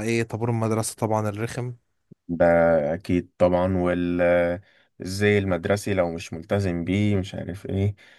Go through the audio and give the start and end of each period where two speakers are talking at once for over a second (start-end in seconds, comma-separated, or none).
none